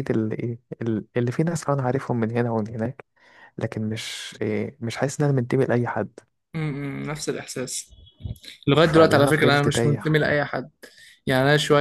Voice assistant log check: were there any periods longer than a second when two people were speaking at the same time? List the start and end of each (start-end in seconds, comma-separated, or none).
8.8-10.2